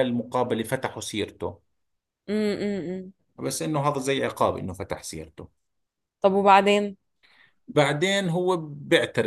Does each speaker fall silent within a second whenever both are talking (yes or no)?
yes